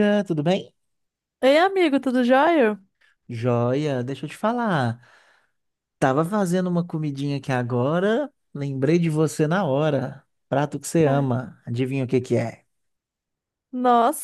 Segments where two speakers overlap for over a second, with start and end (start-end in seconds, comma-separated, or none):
none